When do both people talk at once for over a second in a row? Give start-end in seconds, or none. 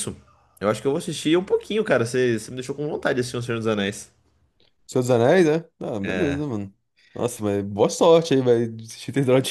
none